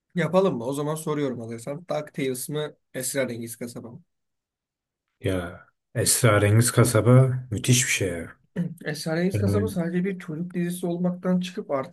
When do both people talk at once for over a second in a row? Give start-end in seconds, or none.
none